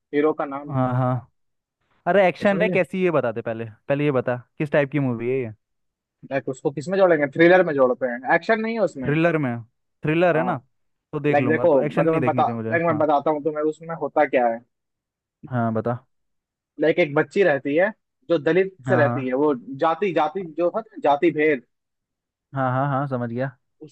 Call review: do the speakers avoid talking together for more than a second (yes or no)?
no